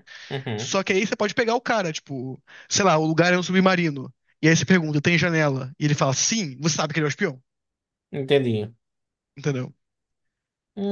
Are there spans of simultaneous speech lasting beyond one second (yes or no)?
no